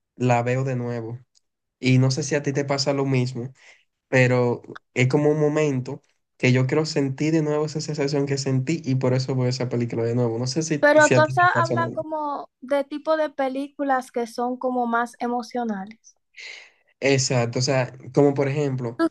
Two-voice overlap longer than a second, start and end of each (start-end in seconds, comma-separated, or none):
10.8-12.1